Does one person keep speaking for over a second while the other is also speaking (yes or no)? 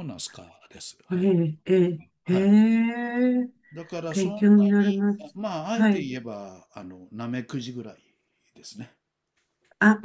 yes